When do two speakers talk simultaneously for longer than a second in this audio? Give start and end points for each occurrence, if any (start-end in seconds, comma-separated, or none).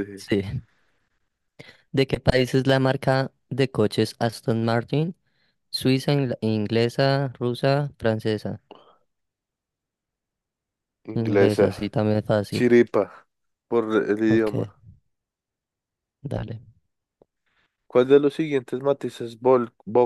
none